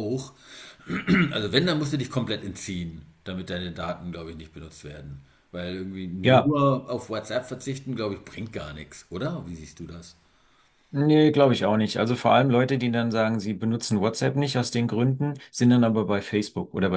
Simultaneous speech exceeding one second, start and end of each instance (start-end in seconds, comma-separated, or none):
none